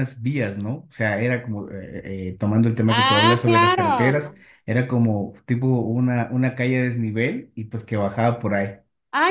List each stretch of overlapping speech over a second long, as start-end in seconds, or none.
2.9-4.4